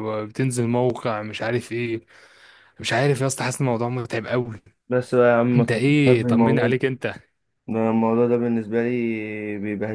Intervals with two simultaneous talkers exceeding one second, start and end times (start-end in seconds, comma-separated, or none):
5.5-6.8